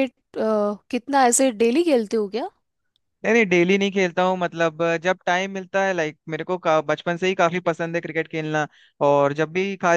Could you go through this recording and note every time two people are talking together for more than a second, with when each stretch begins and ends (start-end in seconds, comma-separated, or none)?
none